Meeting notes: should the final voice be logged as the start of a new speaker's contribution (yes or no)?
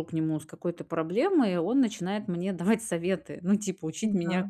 no